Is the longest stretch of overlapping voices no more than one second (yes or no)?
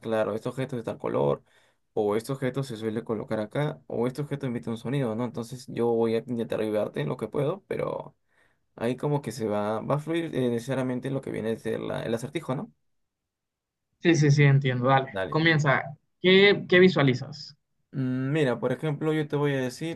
yes